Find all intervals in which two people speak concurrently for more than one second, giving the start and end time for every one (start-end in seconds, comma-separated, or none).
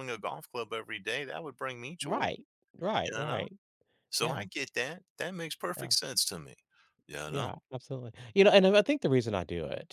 none